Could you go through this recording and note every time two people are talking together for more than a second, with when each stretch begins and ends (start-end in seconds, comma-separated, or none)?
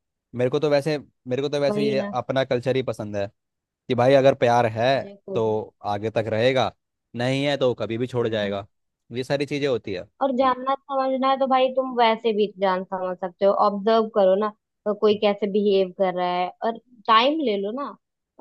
none